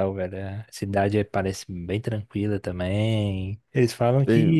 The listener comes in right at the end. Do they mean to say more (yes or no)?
no